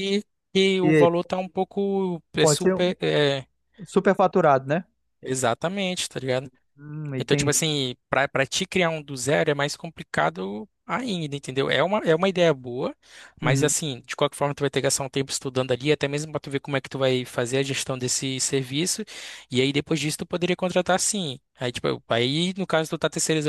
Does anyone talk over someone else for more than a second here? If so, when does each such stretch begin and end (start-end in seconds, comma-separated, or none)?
none